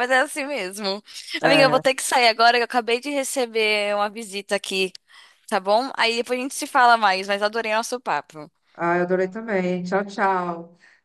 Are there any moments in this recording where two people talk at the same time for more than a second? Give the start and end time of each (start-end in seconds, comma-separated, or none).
none